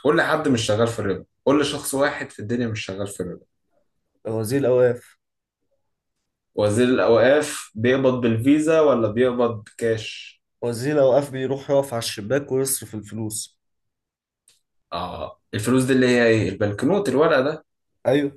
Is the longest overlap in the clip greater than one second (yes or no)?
no